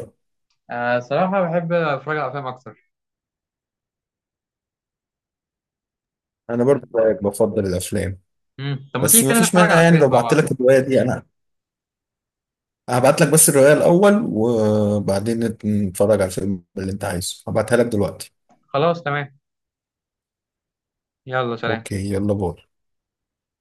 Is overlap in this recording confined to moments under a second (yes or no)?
no